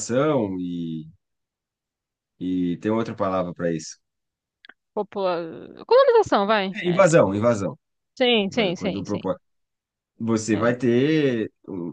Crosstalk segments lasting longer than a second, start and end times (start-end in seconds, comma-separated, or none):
none